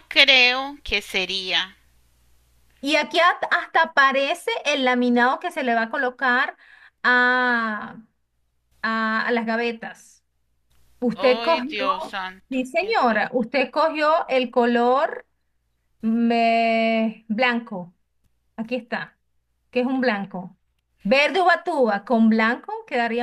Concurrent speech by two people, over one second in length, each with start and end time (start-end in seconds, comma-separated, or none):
11.1-13.5